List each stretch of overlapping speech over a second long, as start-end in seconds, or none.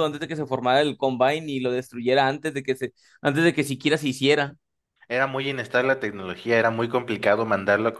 none